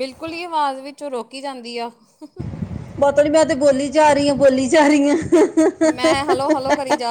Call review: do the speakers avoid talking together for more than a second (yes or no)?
yes